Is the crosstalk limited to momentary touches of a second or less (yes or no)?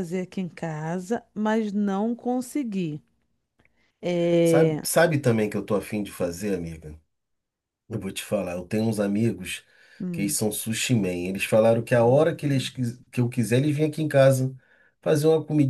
yes